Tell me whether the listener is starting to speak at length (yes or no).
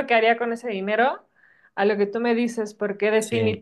no